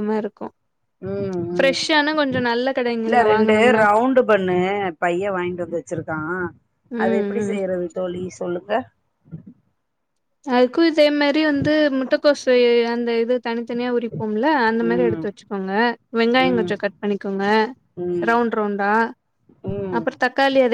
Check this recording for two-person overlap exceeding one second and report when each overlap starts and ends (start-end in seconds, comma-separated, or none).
none